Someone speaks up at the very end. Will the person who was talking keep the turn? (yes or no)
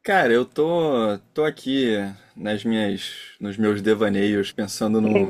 yes